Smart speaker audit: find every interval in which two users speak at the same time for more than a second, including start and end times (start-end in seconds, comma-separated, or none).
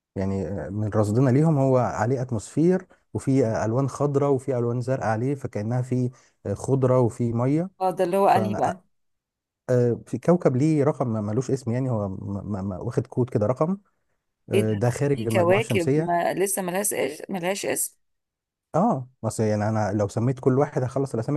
14.5-16.2